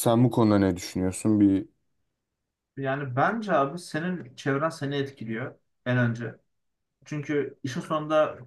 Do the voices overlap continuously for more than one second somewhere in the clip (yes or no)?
no